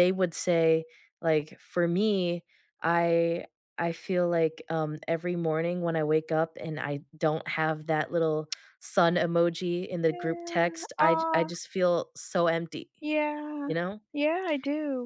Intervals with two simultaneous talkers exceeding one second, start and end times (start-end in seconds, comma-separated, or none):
10.1-11.5